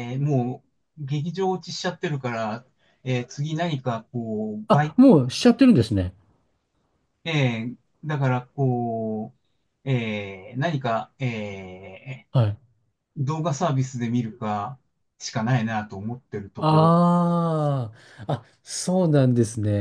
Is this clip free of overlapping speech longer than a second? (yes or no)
yes